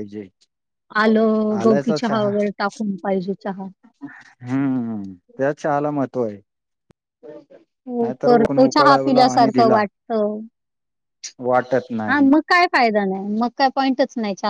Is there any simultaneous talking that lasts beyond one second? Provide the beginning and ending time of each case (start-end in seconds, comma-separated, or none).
8.0-9.8